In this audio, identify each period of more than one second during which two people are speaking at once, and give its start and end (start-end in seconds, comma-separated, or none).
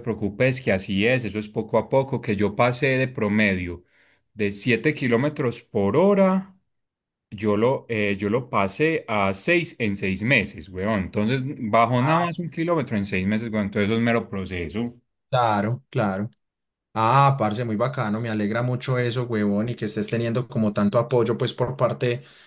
none